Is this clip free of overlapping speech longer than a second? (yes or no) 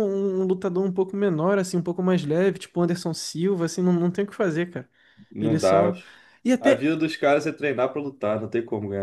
yes